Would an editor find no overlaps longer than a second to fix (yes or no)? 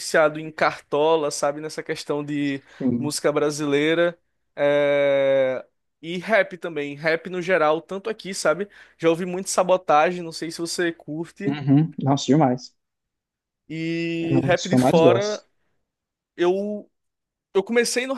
no